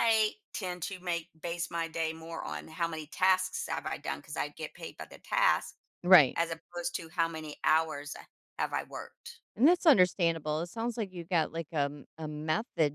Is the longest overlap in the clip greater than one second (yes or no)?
no